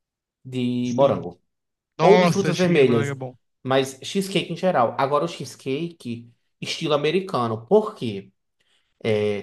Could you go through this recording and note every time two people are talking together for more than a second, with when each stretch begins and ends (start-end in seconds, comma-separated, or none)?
2.0-3.2